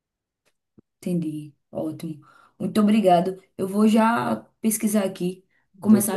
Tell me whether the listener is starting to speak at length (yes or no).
no